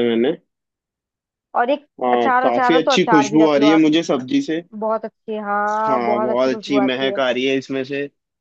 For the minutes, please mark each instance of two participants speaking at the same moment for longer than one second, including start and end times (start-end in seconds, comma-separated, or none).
2.0-3.8, 5.7-7.2